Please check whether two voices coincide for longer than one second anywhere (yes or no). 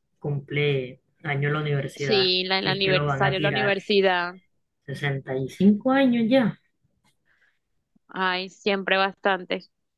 yes